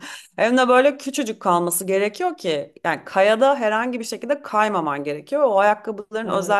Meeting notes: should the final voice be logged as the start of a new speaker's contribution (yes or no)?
no